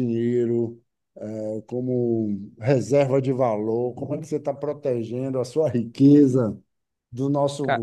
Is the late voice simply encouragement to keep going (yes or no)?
yes